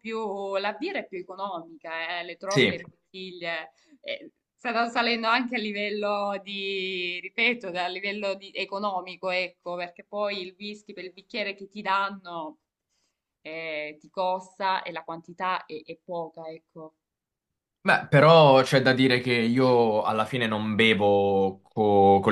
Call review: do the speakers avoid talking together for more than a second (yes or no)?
yes